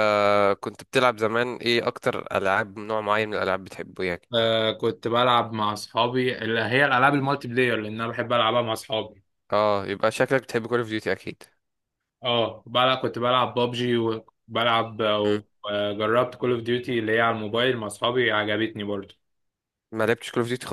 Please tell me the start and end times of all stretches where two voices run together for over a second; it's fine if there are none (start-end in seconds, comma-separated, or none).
none